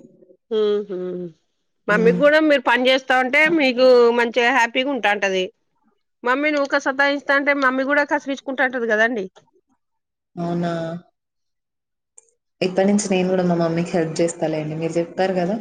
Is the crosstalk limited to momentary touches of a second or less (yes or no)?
yes